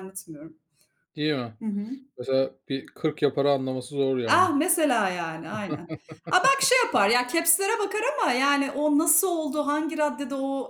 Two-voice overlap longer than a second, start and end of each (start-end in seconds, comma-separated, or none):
none